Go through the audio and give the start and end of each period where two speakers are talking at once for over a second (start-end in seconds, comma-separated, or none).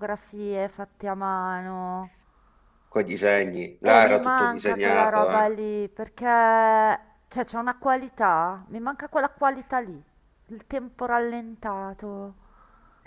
3.8-5.5